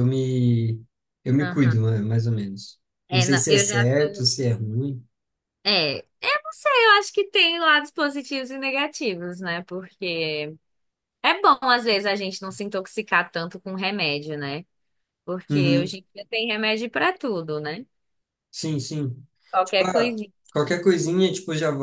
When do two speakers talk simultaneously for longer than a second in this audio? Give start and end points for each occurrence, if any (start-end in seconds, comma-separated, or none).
3.1-4.3